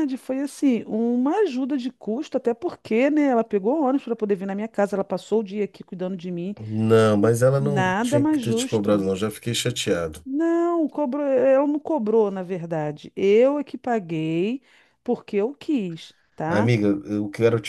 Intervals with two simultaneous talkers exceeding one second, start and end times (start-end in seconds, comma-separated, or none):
7.6-9.1